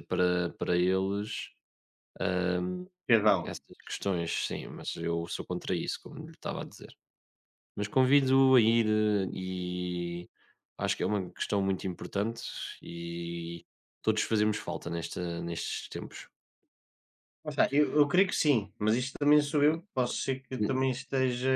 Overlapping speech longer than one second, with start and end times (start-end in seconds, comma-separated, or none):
none